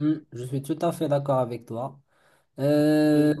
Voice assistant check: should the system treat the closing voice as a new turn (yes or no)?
no